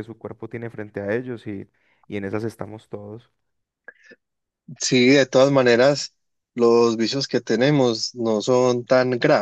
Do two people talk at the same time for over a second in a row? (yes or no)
no